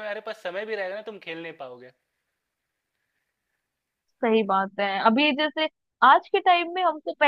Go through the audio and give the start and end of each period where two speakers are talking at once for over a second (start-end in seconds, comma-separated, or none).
none